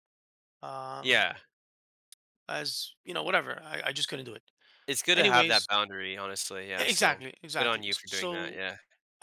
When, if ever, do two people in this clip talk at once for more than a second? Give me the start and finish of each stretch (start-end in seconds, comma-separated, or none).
6.8-8.6